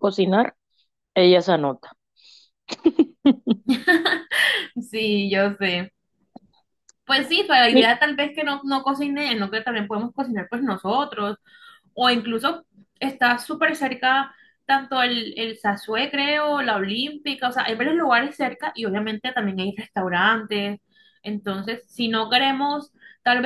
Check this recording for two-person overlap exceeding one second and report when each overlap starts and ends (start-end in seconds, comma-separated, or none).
none